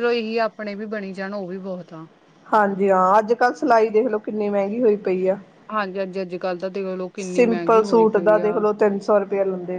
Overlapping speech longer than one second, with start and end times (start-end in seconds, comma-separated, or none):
7.2-8.6